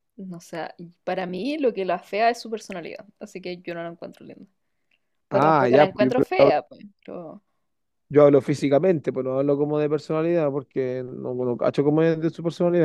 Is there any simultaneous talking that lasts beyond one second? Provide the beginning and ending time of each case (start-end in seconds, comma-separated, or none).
5.3-6.6